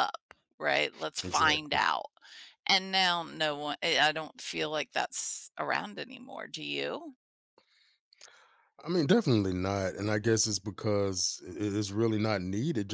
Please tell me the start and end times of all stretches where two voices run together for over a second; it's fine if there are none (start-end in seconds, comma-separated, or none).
none